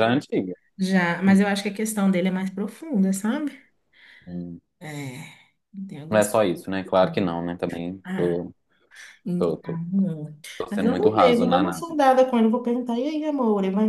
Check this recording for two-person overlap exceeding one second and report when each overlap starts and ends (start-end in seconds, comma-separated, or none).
10.6-12.0